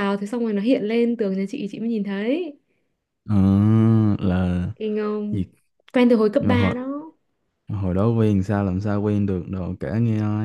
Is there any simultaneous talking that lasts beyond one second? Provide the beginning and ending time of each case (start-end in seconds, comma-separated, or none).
none